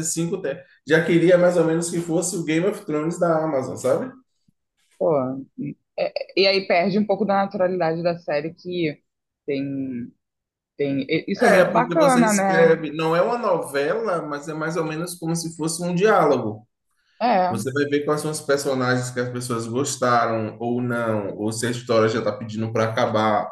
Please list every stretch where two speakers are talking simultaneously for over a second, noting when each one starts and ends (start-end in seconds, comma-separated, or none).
11.4-12.8